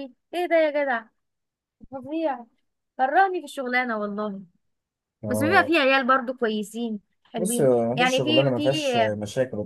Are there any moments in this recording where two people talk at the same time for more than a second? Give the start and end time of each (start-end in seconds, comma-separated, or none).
7.4-8.7